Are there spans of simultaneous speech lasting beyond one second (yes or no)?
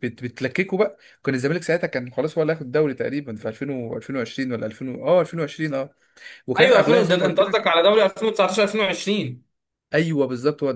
yes